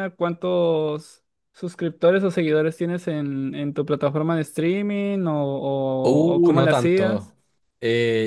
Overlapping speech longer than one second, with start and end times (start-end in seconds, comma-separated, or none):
6.0-7.3